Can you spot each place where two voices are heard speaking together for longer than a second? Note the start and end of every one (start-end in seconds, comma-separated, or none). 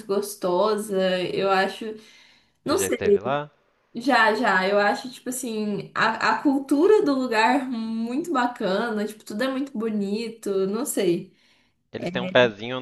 none